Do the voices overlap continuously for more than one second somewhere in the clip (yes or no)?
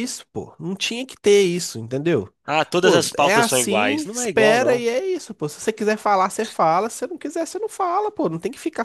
yes